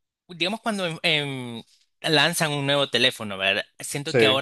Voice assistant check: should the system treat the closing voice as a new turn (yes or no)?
no